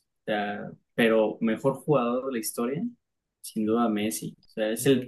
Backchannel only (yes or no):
yes